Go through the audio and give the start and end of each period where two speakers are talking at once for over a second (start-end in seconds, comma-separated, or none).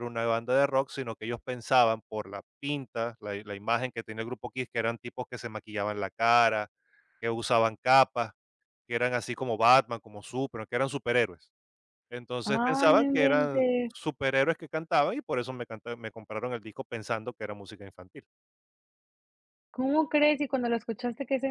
12.4-13.9